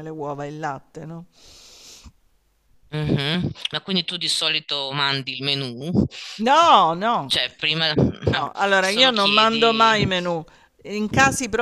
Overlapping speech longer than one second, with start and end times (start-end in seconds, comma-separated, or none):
8.3-10.0